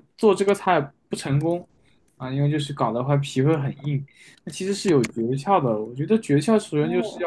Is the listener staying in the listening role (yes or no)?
yes